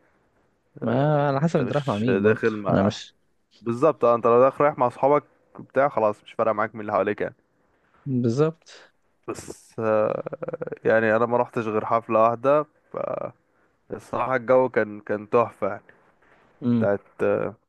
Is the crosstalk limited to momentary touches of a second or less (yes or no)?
no